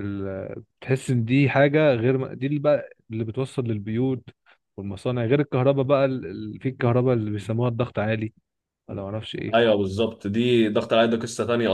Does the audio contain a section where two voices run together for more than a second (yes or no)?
no